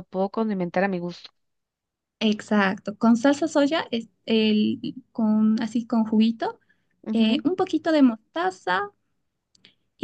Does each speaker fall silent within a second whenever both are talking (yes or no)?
yes